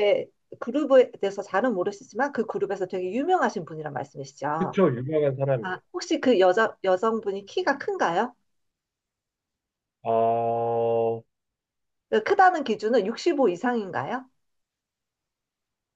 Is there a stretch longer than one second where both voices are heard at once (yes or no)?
no